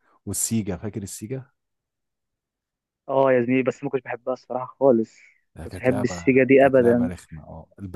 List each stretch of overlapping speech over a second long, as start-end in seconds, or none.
5.6-7.1